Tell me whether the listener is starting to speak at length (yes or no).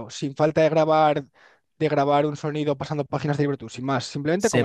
yes